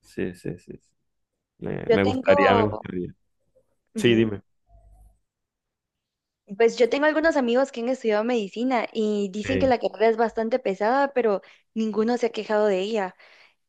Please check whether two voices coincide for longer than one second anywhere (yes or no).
no